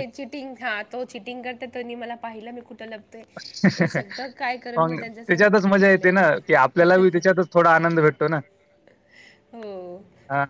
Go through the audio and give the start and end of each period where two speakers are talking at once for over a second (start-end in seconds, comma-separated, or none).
5.0-6.4